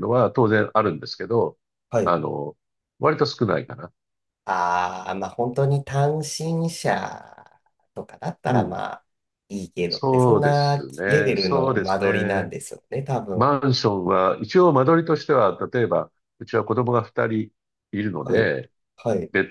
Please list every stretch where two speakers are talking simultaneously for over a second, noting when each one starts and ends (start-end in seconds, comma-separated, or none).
9.9-12.5